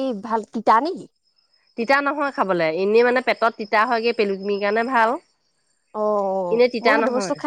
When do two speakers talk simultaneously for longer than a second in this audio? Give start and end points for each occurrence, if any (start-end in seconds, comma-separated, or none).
none